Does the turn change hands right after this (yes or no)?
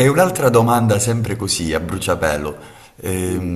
no